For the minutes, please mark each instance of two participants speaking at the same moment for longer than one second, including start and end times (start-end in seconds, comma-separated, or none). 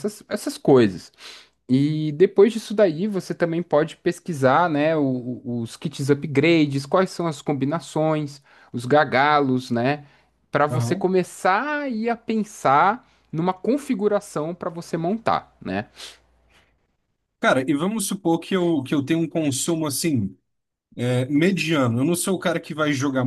none